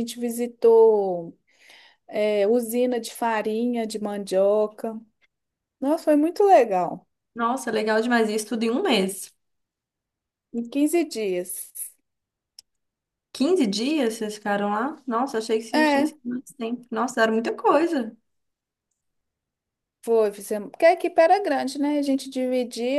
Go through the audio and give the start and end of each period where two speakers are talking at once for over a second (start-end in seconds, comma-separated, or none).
none